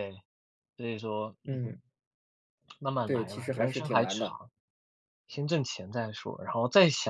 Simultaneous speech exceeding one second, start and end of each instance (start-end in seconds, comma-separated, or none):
3.0-4.4